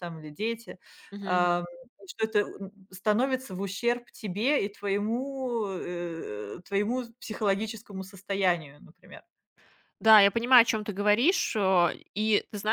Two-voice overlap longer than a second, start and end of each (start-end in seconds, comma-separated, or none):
none